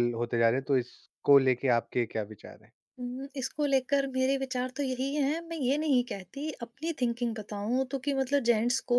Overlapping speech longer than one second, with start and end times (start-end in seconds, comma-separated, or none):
none